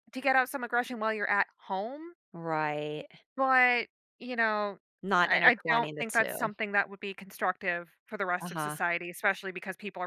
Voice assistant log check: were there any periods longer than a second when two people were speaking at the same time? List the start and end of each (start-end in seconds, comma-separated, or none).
5.2-6.5